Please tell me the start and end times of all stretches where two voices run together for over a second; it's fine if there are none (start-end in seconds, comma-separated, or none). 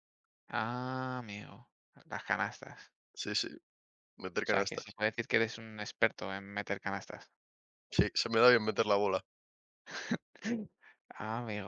none